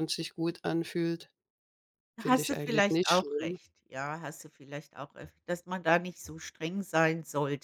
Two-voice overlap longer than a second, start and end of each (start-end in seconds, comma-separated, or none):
2.2-3.6